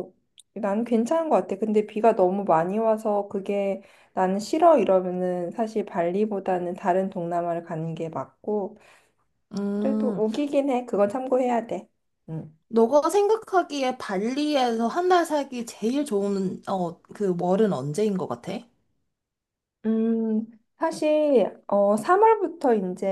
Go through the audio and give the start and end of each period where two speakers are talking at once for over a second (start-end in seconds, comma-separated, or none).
none